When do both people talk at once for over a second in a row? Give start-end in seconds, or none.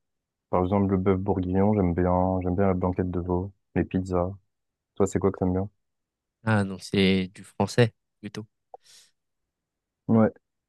none